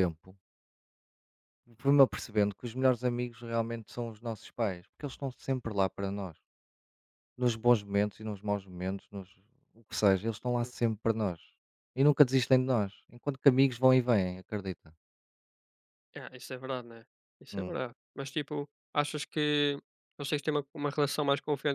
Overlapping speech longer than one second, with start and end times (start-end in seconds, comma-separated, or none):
none